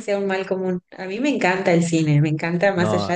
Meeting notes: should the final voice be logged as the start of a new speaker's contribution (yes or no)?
no